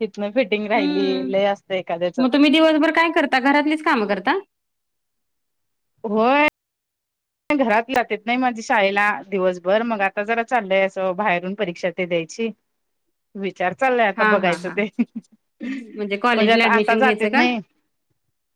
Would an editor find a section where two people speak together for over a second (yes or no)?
yes